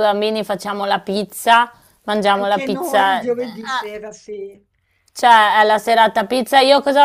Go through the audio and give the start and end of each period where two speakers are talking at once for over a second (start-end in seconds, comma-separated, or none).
2.4-3.9